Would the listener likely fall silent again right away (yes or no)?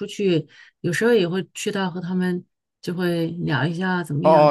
no